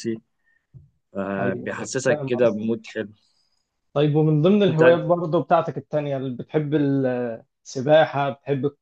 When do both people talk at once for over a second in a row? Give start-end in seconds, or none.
1.4-2.7